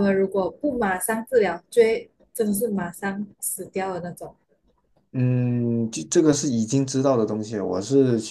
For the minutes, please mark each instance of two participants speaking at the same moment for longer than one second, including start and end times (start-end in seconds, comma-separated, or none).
none